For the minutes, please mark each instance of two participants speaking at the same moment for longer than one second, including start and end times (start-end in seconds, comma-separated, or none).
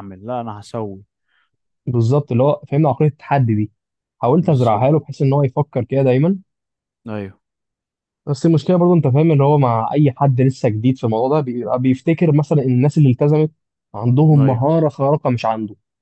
none